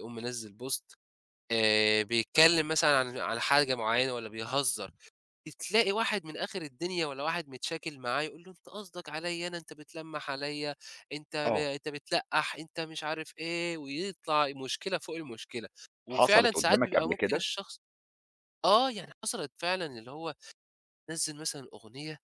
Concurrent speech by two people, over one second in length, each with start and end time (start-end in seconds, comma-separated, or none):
16.1-17.4